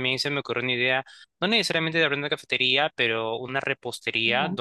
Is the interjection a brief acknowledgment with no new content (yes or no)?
yes